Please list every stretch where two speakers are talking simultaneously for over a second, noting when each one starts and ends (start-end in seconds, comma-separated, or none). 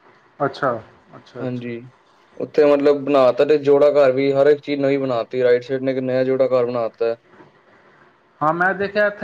none